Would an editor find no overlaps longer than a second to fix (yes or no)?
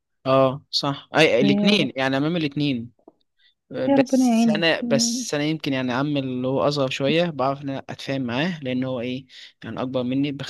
no